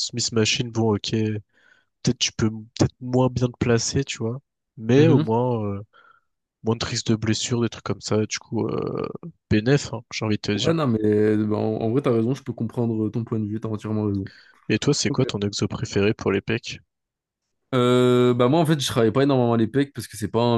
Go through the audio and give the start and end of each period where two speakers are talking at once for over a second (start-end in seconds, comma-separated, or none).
none